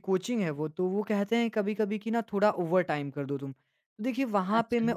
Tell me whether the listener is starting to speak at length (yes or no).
no